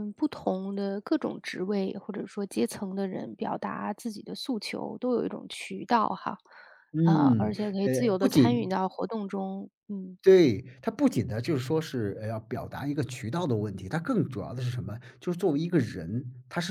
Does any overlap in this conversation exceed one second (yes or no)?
yes